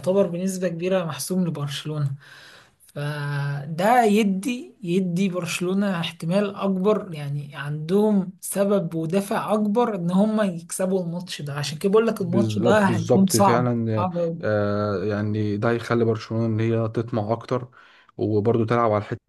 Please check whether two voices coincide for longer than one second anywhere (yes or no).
yes